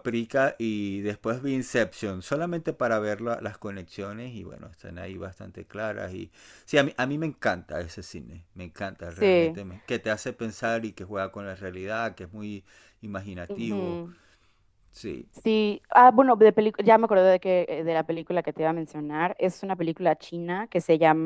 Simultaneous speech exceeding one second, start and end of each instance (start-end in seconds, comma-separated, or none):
none